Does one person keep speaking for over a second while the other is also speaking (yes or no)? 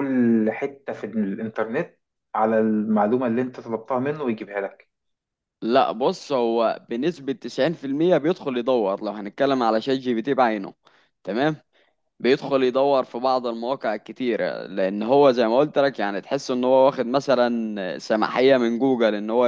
no